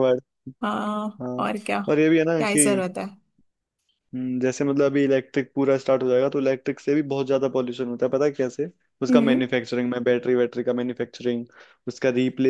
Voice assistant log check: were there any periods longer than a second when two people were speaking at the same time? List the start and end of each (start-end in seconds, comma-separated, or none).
none